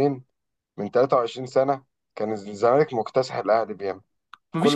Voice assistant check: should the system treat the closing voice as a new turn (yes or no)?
yes